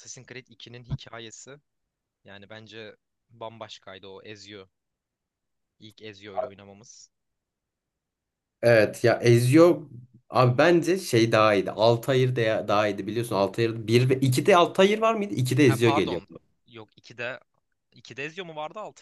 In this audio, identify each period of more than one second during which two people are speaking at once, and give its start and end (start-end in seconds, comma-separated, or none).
none